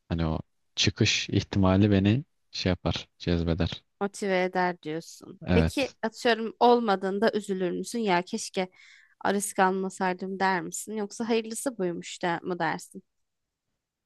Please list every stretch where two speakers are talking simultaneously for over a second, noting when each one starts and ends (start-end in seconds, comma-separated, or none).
none